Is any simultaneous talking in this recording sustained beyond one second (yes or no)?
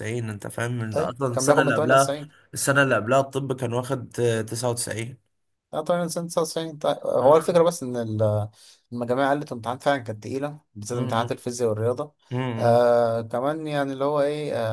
yes